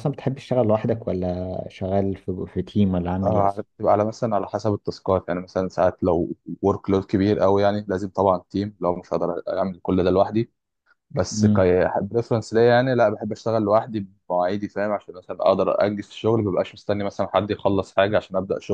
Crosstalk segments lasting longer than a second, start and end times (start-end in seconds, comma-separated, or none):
none